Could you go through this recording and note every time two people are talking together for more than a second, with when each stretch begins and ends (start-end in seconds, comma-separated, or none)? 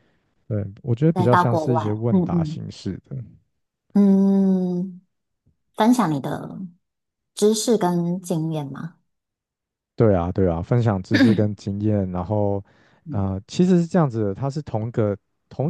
1.1-2.6